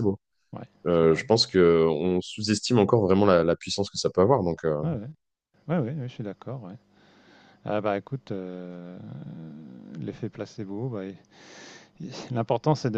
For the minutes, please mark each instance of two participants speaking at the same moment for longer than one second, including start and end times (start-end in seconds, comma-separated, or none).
none